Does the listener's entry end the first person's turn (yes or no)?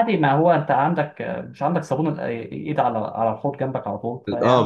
yes